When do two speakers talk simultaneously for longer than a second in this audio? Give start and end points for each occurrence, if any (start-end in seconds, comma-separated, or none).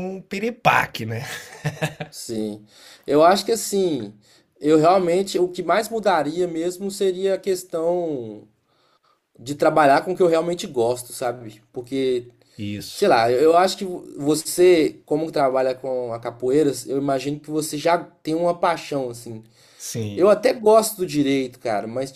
none